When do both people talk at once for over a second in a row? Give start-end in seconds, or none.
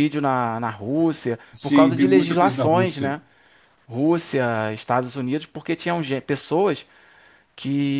1.5-3.2